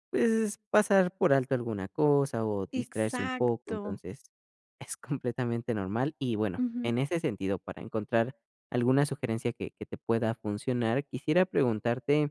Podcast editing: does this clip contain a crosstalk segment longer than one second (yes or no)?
yes